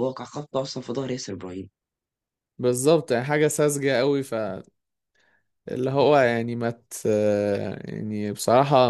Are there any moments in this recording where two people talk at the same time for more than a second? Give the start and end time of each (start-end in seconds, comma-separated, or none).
none